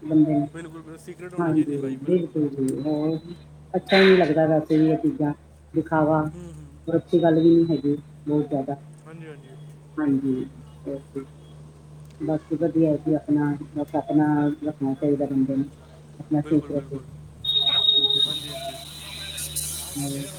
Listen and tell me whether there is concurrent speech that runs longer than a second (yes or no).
yes